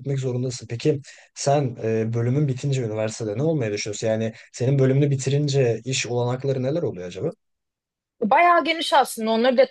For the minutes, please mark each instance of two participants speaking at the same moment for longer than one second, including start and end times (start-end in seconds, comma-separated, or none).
none